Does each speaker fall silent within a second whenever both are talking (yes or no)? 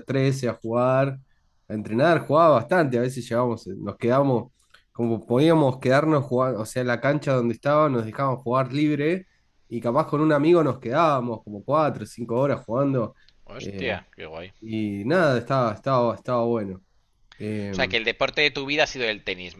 yes